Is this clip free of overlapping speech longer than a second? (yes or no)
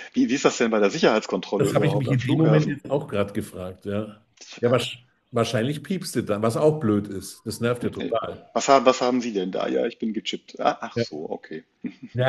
no